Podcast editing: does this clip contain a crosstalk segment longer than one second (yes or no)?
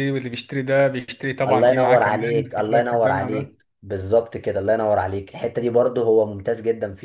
yes